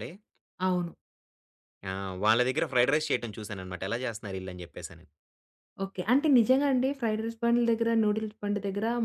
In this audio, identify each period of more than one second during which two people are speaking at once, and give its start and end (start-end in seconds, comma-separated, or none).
none